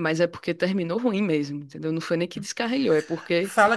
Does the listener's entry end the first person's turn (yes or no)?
yes